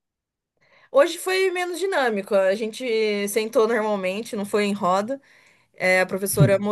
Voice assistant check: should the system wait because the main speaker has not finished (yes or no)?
yes